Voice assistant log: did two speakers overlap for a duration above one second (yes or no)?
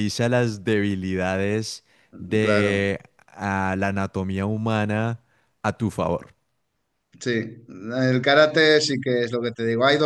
no